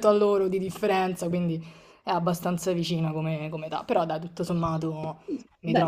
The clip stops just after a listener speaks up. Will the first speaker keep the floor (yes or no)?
no